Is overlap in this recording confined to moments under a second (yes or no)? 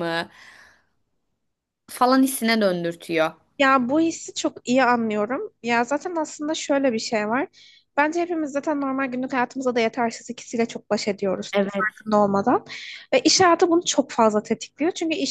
yes